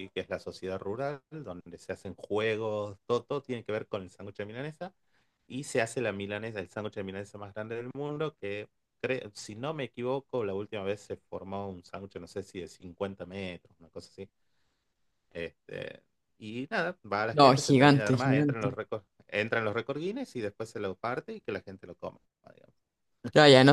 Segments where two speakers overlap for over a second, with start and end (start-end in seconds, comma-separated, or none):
17.3-18.7